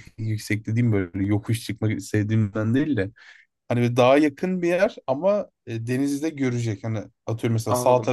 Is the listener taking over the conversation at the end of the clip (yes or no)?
no